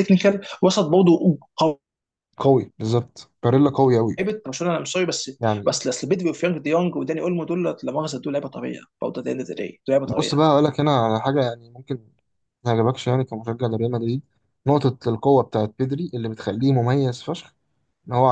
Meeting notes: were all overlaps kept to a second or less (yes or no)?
yes